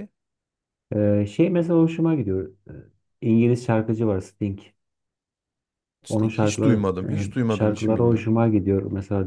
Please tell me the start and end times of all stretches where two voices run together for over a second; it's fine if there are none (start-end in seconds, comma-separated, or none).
6.1-8.3